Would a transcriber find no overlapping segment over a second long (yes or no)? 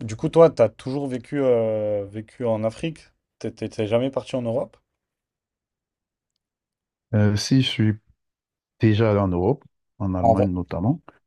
yes